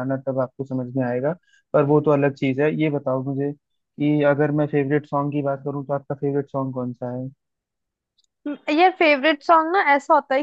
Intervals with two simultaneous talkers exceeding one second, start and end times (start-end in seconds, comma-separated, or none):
none